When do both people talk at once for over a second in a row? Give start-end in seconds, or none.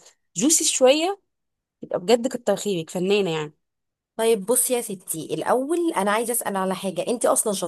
none